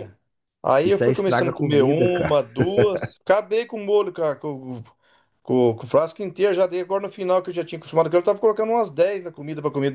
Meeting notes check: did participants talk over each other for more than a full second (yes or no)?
yes